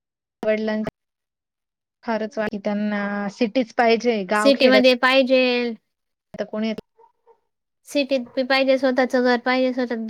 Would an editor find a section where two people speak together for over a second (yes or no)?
no